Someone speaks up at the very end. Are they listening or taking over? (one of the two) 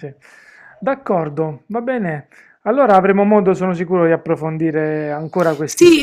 taking over